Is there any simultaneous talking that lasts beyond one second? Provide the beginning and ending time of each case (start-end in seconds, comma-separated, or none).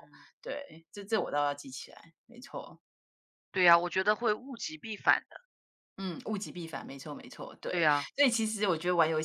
none